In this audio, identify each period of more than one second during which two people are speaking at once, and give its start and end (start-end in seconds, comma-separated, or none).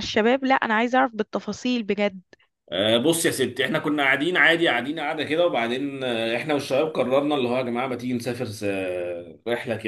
none